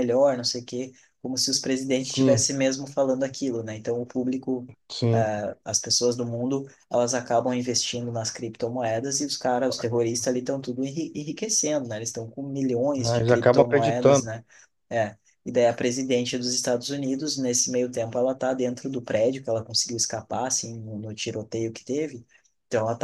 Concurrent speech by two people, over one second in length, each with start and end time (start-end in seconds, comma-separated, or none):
13.0-14.3